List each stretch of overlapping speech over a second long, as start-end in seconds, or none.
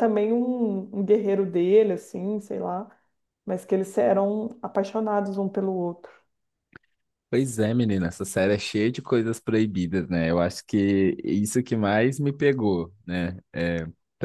none